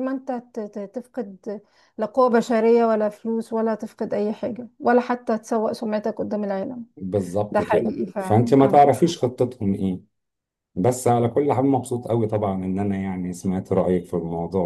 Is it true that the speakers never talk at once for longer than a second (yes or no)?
no